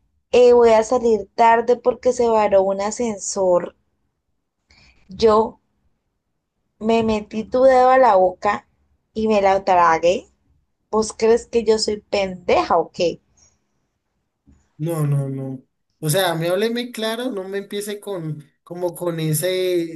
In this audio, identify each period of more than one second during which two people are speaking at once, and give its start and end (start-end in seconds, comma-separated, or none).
none